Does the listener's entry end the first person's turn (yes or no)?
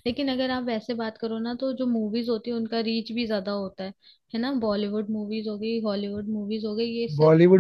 yes